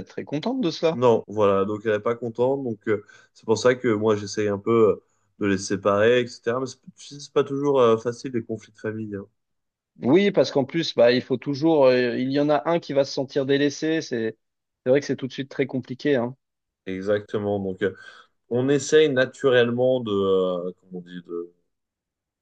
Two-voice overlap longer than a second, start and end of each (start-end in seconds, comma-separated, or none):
none